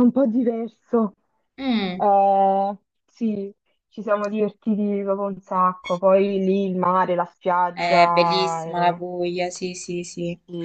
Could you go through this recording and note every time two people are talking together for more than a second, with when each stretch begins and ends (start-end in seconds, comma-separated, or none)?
7.7-9.0